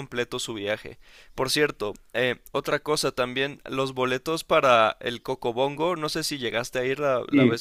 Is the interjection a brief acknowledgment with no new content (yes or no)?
no